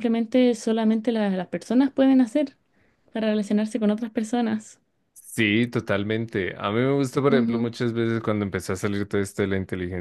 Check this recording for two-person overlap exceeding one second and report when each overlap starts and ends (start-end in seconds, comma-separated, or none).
none